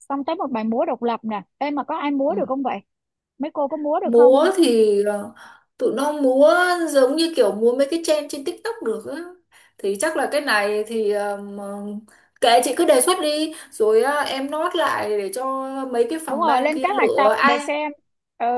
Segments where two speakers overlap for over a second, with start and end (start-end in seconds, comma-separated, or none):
16.3-17.7